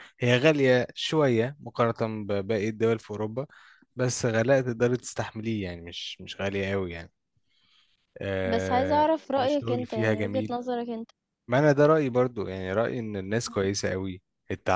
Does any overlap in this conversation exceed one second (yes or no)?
yes